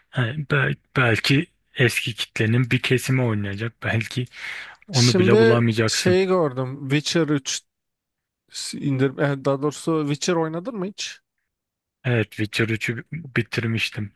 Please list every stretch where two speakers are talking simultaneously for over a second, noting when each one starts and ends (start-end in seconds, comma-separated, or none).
4.9-6.2